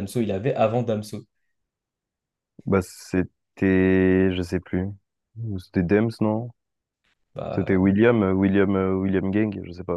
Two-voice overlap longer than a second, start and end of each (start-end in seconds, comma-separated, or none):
none